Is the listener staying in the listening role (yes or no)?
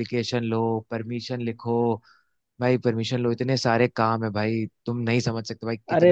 no